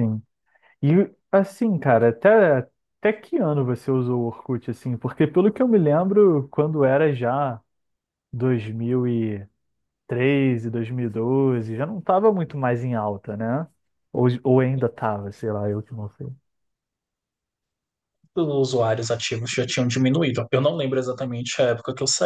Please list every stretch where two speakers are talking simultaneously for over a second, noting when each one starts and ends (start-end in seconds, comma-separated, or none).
none